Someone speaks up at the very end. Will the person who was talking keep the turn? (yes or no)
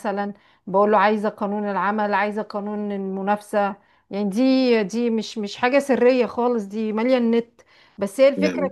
yes